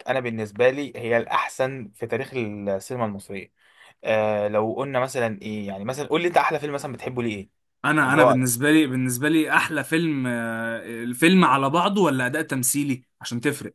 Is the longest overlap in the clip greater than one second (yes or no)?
no